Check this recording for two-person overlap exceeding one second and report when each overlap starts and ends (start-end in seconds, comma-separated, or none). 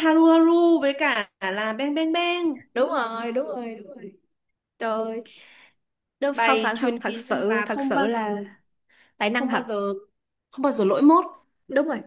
6.3-8.2